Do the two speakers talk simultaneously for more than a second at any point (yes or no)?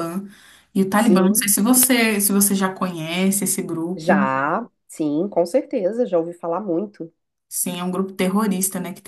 no